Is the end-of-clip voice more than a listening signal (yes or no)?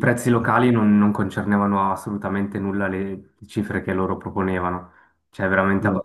no